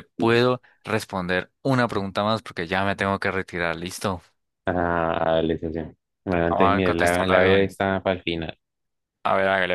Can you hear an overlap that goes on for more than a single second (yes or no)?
yes